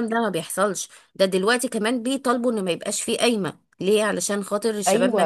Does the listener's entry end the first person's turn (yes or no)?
yes